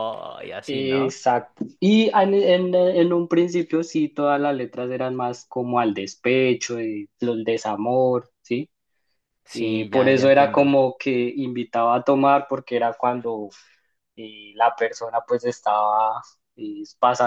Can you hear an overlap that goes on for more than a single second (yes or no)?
yes